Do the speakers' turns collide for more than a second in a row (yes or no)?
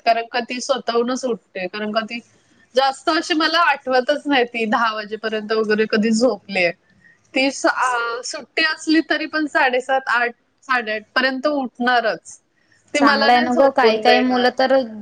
yes